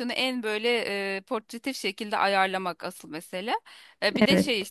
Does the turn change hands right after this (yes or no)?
no